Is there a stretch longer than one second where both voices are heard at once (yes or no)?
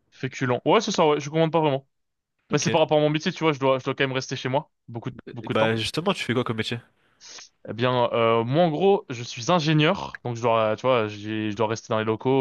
no